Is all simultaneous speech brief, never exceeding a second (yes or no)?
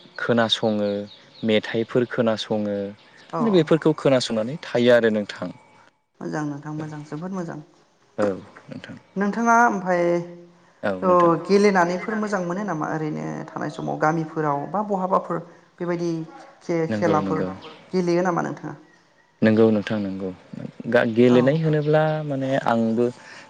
no